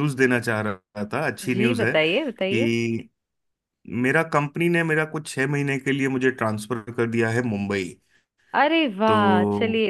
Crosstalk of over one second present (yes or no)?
yes